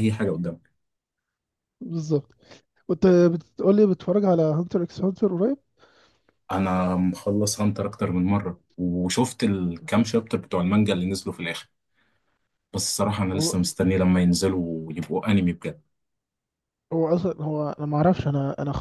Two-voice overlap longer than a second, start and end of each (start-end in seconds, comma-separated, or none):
none